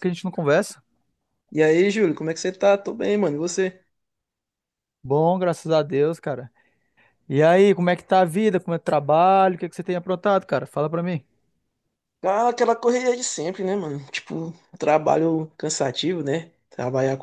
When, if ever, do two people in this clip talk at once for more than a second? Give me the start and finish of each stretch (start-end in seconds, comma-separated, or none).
none